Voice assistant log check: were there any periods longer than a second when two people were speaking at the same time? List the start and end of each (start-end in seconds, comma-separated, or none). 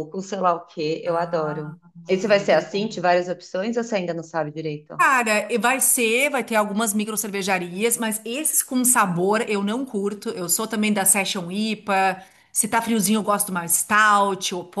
1.1-3.0